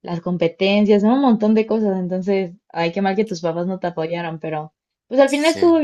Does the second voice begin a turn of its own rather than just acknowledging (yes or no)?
no